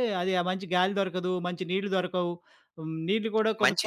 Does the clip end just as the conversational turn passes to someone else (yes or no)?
yes